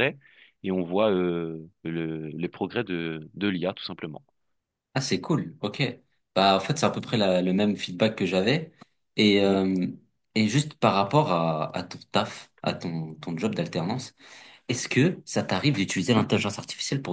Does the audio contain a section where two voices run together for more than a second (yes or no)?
no